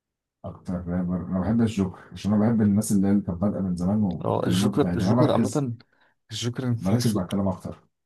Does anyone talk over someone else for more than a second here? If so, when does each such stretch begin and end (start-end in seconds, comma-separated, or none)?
4.2-5.7